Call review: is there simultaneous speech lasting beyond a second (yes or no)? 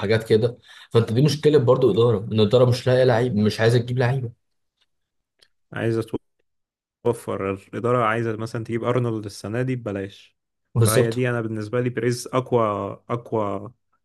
no